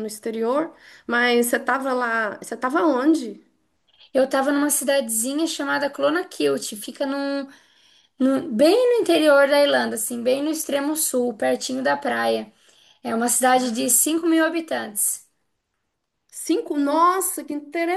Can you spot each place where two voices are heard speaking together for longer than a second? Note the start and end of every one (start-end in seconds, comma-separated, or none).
none